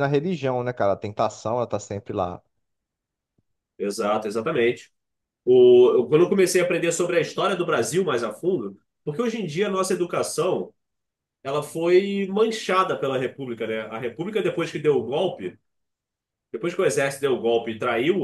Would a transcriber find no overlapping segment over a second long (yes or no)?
yes